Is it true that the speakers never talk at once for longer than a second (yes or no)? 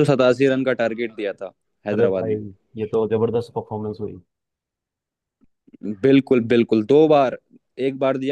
yes